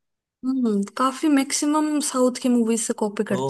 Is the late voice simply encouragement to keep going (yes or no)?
no